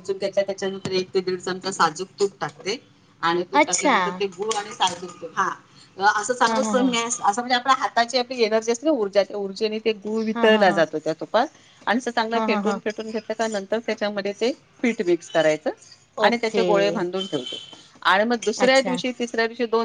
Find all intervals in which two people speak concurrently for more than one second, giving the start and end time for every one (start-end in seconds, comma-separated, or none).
none